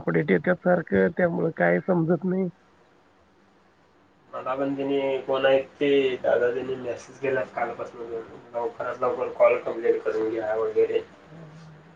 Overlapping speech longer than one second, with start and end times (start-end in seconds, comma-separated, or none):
none